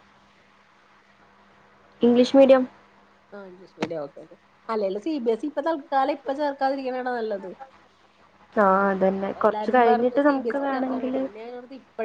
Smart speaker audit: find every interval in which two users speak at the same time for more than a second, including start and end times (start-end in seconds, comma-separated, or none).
9.4-11.2